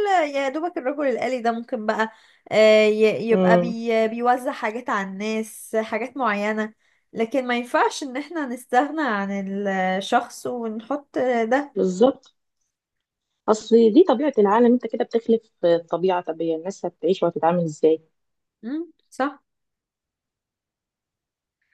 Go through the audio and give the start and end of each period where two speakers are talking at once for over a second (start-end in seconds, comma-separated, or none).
none